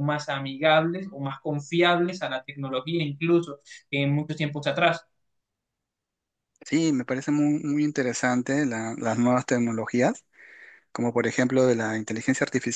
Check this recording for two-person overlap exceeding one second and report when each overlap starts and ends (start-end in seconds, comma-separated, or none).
none